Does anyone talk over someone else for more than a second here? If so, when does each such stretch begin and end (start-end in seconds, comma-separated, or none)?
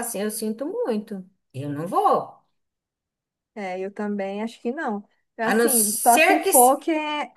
5.5-6.7